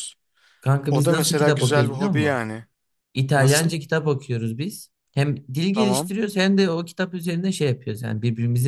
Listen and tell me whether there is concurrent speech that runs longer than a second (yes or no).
yes